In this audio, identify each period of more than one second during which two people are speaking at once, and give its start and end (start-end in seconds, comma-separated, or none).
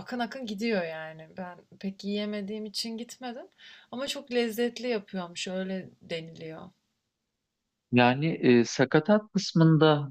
none